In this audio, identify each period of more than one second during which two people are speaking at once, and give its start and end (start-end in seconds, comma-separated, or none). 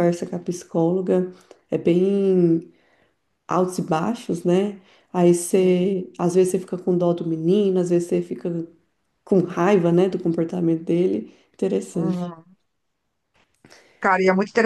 none